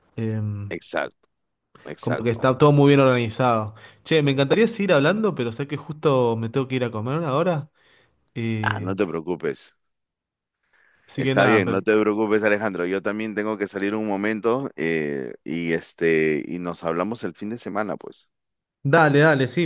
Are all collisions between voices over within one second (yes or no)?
yes